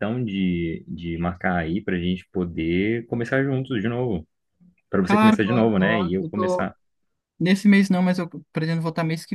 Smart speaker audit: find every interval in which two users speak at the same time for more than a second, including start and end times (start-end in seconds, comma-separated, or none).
5.1-6.7